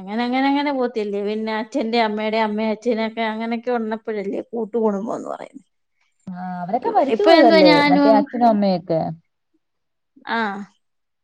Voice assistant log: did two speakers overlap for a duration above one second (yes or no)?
no